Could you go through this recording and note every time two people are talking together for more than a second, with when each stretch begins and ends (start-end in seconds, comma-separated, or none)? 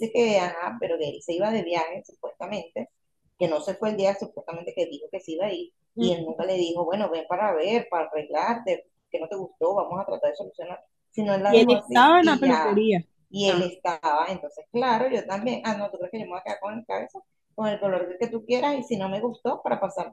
11.5-12.8